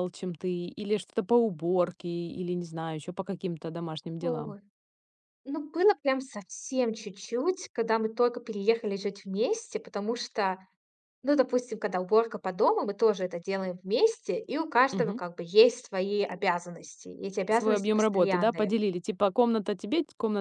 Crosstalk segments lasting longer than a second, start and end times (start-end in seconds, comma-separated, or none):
17.5-18.7